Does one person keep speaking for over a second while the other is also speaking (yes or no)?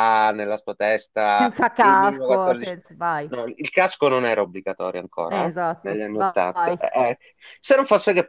yes